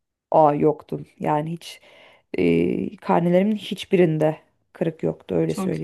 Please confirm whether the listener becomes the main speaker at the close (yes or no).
yes